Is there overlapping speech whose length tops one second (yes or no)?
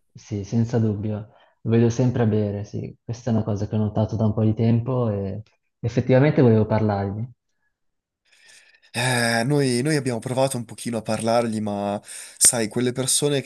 no